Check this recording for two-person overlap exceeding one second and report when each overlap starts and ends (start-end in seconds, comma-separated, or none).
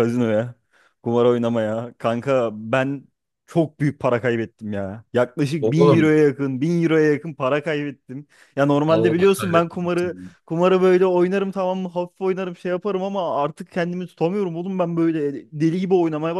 8.9-10.3